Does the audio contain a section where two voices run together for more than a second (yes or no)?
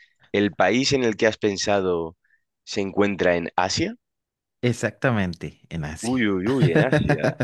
no